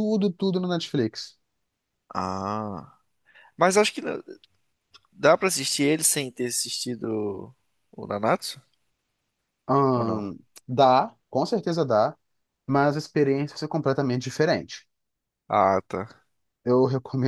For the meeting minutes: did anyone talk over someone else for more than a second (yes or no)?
no